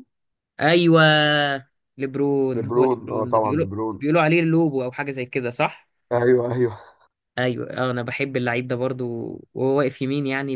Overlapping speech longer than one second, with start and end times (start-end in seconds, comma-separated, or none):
2.5-4.0